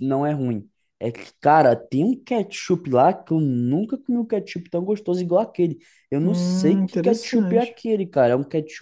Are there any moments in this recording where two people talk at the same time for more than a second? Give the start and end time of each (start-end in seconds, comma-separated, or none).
6.2-7.8